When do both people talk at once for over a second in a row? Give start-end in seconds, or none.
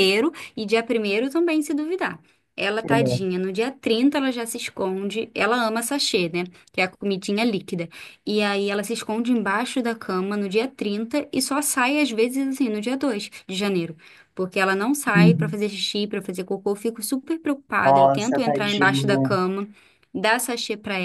17.8-19.4